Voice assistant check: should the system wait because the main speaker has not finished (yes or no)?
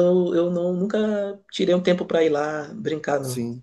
no